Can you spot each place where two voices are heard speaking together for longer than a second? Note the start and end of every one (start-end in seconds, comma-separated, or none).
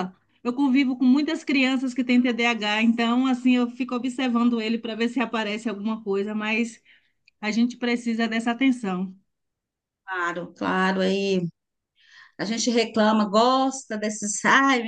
none